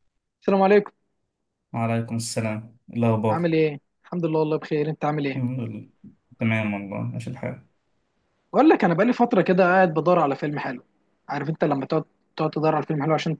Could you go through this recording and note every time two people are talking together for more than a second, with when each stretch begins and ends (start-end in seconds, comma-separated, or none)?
none